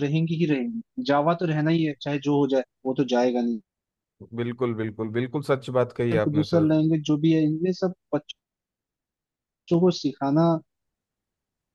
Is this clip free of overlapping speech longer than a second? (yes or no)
yes